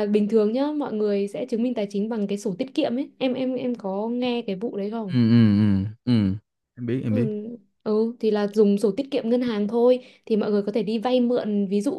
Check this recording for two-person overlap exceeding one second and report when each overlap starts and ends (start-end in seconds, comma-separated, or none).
none